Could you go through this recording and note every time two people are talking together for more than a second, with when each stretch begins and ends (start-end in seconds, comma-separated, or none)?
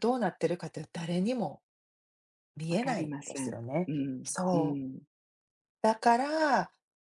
2.7-4.8